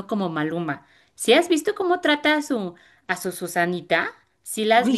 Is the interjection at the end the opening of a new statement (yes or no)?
no